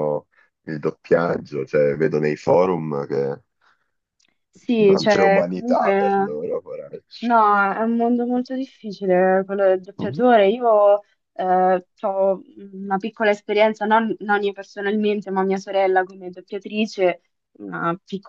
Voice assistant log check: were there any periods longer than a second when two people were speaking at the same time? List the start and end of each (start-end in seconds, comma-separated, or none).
4.8-6.3